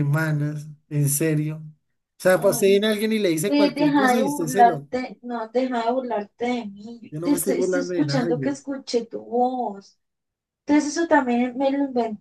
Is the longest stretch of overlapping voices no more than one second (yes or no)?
no